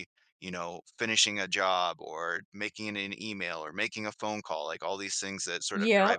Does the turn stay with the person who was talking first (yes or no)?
no